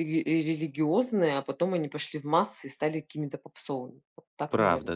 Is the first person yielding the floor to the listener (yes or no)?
yes